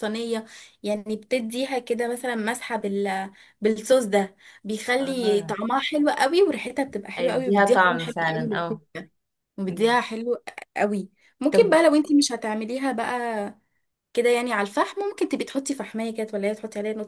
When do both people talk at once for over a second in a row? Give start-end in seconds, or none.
7.2-8.8